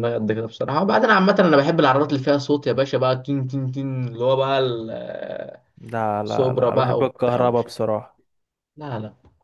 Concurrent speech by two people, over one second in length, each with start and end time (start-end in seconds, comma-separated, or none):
6.2-7.7